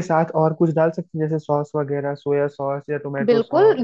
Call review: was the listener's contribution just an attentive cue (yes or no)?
no